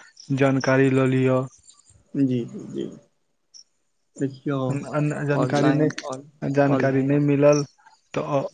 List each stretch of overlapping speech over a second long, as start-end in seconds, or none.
5.4-7.2